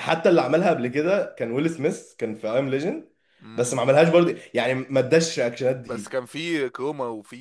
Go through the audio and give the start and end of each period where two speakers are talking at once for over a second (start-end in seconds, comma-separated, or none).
none